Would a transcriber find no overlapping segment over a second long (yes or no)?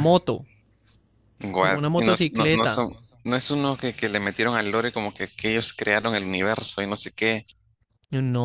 no